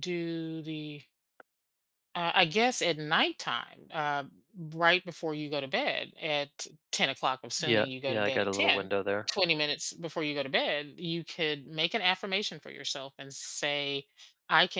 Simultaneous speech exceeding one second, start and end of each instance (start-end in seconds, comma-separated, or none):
7.6-8.9